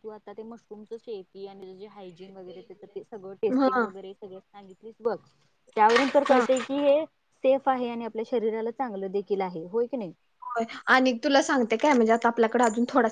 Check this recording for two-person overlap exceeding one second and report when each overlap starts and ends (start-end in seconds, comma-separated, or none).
none